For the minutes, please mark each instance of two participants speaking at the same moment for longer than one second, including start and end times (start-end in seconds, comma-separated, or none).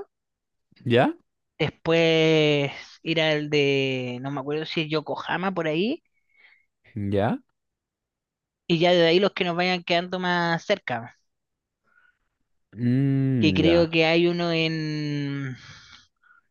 none